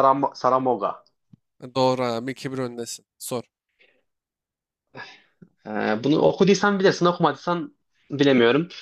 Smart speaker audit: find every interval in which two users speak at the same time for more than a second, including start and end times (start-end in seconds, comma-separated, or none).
none